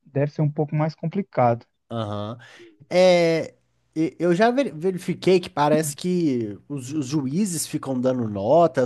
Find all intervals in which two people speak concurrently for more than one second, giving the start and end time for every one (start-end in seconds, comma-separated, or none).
none